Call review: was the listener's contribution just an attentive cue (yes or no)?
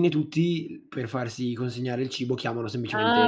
no